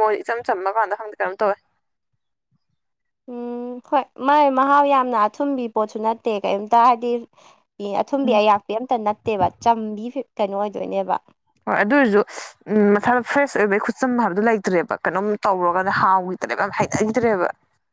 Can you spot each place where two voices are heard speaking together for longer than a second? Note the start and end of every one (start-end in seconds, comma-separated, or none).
none